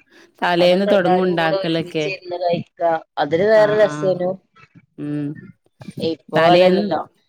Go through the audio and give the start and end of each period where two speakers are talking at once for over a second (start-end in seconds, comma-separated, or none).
0.7-2.0